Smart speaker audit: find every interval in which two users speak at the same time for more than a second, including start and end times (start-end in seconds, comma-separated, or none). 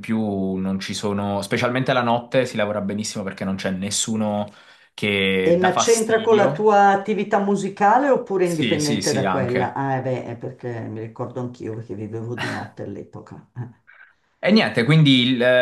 5.4-6.7, 8.4-9.8